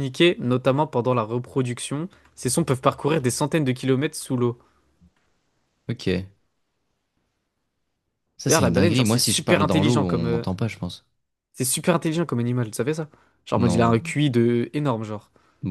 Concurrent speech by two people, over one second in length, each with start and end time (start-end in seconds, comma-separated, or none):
8.5-10.4